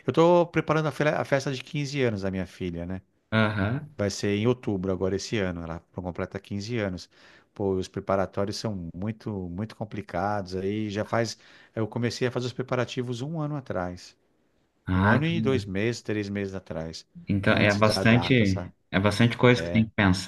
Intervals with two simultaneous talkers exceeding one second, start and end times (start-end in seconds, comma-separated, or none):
17.5-18.7